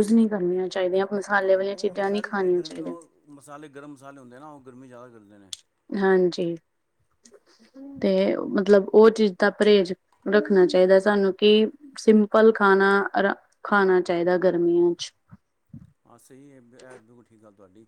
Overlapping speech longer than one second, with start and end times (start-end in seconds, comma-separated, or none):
1.4-2.9